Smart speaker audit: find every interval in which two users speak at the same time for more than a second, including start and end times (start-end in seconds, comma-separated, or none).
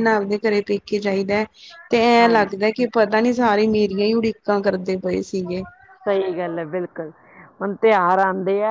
none